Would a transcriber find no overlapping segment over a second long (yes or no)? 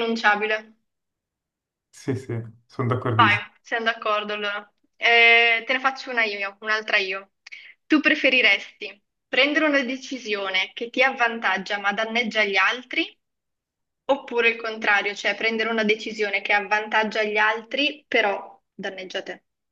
yes